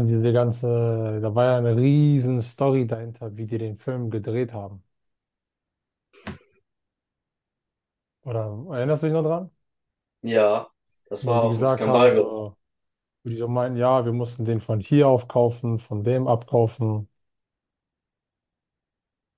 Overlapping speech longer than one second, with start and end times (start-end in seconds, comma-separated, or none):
11.2-12.4